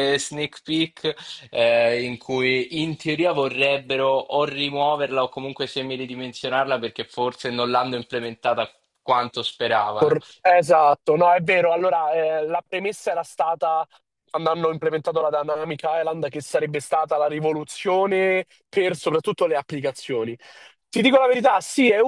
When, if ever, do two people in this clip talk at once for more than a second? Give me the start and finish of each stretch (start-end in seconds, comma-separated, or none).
none